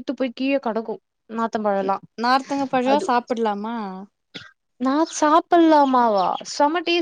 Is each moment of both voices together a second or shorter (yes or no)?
yes